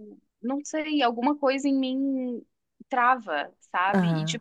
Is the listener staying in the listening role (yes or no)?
yes